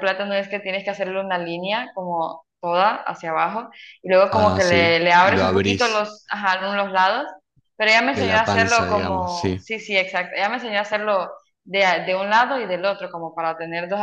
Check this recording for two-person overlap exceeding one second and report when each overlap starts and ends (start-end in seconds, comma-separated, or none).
4.3-6.1, 8.1-9.6